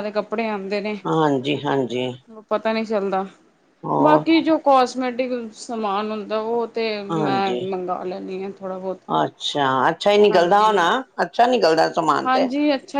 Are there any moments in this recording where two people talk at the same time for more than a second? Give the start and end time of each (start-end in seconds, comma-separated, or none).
none